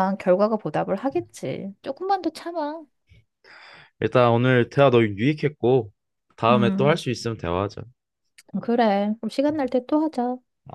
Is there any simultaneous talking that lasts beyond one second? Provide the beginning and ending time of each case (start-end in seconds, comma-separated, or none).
none